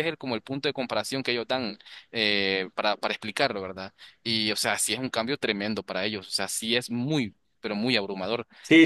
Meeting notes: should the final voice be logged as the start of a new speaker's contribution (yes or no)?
yes